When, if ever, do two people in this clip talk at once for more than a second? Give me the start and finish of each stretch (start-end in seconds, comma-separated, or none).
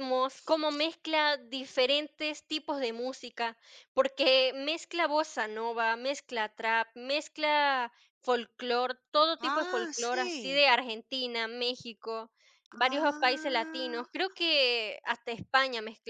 9.4-10.6, 12.8-14.0